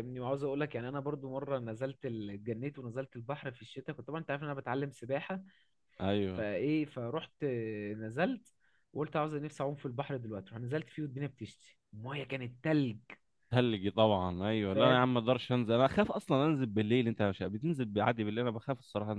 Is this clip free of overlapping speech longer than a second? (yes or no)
yes